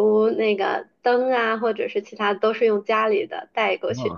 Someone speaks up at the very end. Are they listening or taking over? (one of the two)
listening